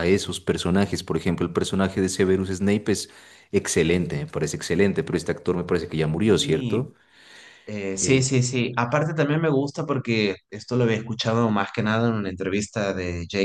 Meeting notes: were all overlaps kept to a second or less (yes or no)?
yes